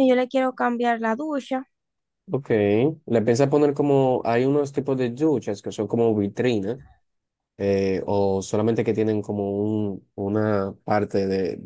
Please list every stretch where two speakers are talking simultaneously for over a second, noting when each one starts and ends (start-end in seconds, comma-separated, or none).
none